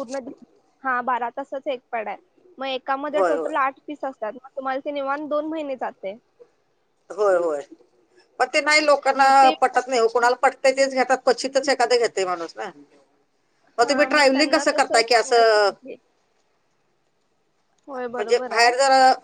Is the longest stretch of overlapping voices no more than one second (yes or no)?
no